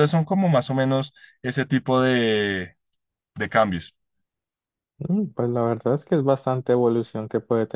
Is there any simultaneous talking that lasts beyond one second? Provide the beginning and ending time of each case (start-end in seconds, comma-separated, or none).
none